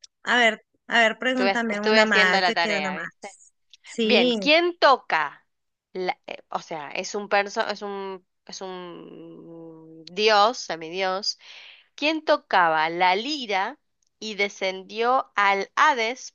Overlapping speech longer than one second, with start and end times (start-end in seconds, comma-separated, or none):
1.3-3.4